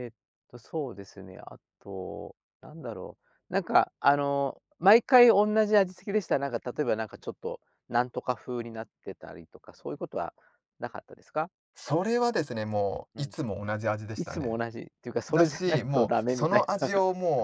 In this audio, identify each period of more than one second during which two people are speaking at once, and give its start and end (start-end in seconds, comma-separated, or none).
15.3-16.9